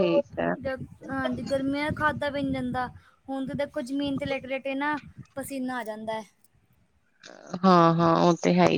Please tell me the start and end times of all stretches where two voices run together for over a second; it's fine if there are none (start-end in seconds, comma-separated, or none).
none